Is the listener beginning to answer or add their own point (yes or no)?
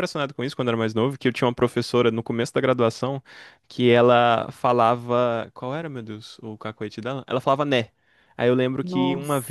no